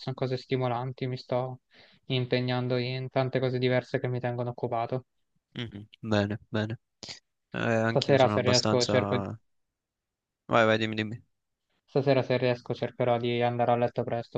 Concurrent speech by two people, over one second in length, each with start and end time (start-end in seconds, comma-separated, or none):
7.9-9.2